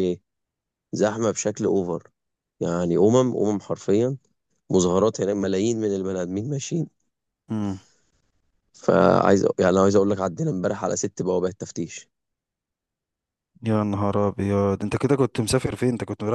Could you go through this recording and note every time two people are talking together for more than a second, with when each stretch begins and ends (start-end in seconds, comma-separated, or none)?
none